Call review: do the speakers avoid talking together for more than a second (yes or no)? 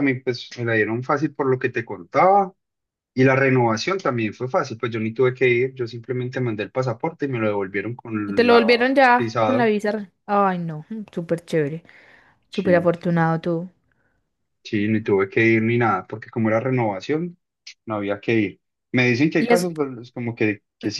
no